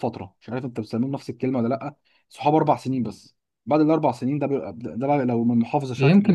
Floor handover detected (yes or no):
yes